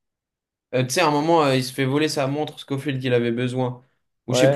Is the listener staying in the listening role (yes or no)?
no